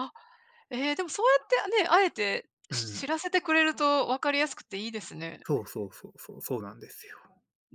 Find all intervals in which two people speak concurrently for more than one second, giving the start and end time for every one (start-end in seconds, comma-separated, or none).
none